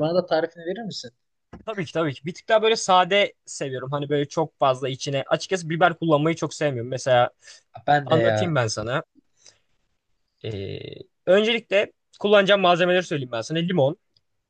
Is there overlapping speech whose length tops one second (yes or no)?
no